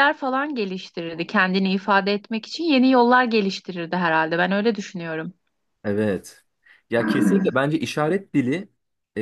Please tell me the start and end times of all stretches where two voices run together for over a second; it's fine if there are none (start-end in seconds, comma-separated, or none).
none